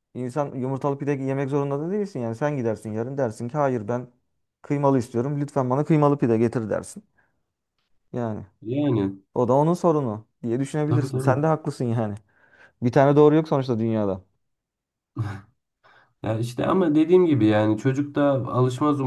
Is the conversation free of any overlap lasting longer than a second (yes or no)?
yes